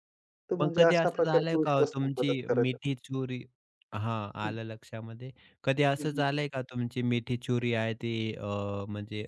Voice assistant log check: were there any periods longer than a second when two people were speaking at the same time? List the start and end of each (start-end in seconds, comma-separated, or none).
0.6-2.8